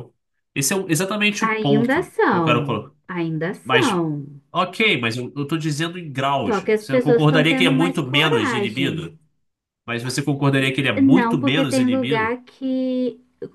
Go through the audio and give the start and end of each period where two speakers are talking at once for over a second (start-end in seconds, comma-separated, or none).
1.4-2.9, 6.5-9.2, 10.9-12.3